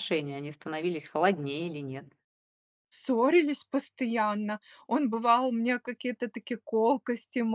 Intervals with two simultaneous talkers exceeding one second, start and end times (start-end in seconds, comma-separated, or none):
none